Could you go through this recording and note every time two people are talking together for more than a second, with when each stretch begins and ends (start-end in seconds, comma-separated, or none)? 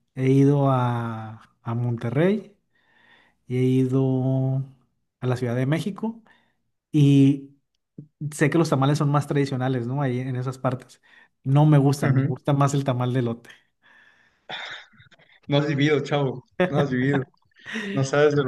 none